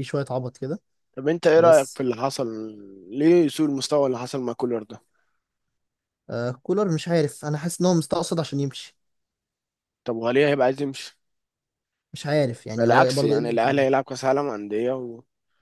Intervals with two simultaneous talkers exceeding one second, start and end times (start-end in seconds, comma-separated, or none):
12.8-14.0